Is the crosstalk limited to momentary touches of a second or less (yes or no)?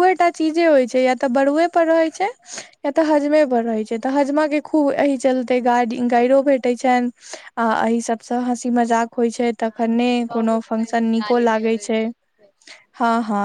no